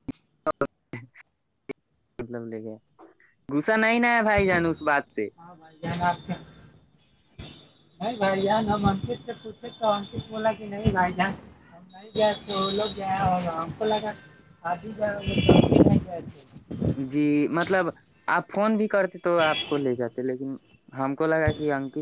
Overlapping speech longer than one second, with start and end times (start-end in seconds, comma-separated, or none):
none